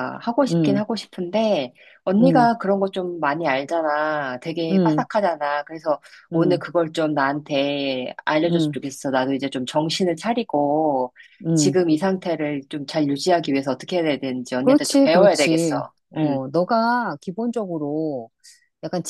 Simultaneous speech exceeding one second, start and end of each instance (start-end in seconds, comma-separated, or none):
14.6-16.4